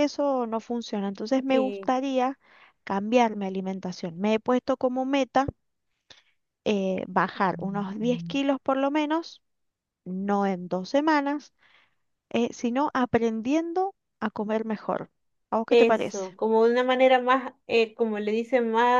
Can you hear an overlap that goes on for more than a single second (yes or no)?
no